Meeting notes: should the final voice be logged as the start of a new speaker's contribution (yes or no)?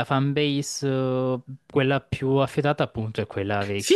yes